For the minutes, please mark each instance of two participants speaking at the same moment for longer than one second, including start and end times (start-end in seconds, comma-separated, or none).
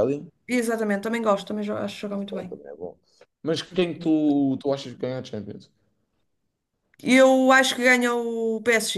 none